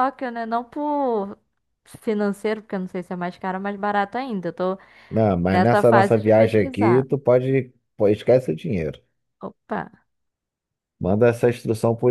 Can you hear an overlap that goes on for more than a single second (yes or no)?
yes